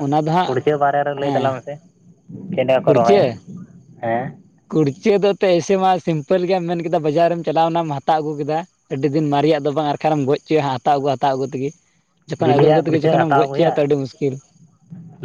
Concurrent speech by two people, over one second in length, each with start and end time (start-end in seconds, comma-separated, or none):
12.4-13.7